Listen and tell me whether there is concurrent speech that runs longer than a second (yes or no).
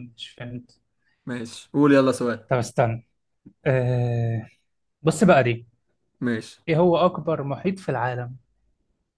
no